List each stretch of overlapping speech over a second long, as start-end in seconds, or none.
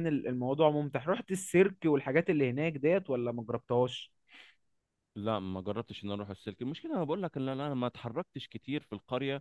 none